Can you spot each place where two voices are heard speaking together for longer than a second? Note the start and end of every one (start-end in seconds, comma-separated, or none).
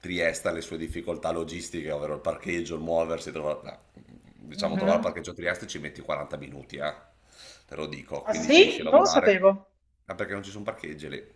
8.2-9.4